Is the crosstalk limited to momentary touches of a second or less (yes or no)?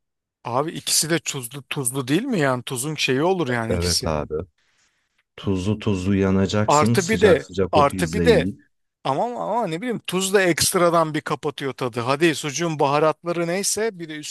no